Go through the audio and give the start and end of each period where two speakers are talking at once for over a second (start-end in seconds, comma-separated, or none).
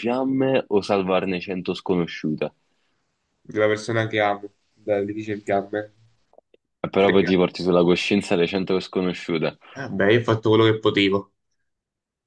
none